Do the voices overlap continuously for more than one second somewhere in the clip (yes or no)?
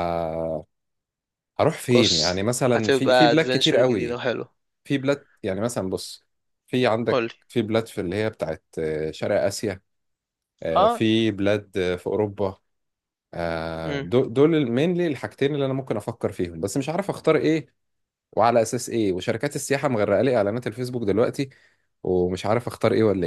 yes